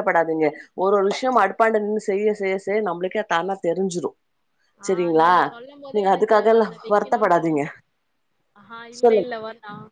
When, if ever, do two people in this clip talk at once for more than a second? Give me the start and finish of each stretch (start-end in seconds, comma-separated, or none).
5.9-7.6